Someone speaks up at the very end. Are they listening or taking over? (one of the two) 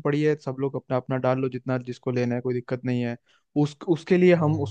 listening